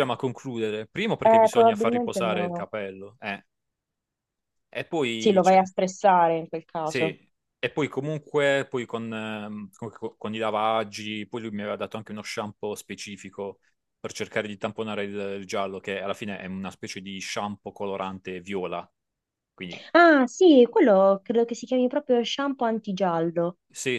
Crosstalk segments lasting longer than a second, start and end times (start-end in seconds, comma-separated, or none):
1.2-2.6